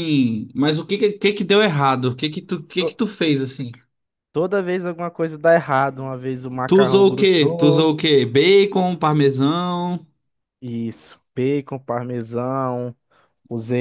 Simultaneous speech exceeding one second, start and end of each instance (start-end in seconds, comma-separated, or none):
6.7-7.9